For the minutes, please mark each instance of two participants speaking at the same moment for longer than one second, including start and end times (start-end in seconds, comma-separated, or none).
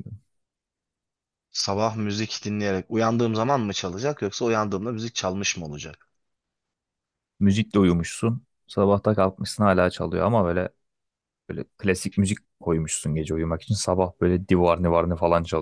none